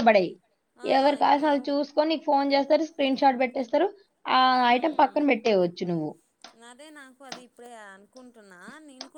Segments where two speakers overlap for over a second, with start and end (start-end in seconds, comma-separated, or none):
none